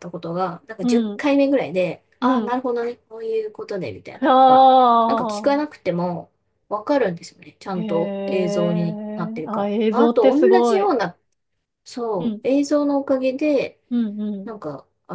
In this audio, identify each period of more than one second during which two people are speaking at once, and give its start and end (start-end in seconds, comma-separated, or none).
7.8-10.9